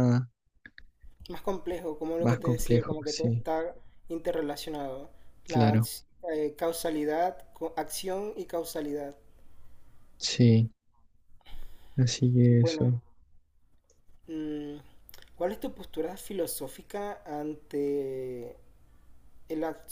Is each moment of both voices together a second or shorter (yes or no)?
no